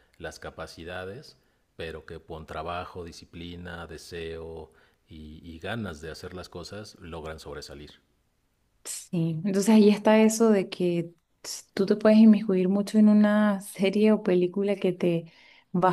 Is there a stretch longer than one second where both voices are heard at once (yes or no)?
no